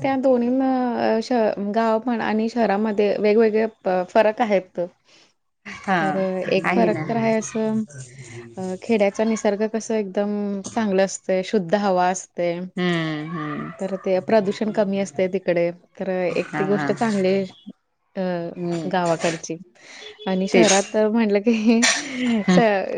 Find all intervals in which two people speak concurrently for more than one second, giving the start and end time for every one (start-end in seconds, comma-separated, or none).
none